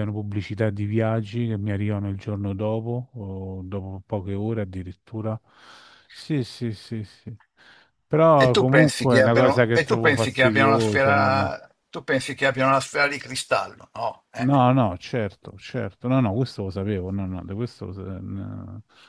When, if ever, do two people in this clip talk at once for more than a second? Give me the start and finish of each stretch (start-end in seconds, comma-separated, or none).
8.4-11.5